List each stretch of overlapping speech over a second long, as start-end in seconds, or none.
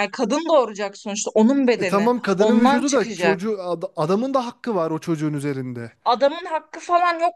1.8-3.5